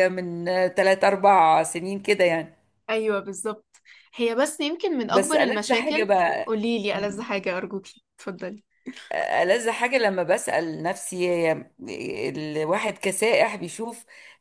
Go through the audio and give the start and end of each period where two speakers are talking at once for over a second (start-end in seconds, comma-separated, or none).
5.1-6.5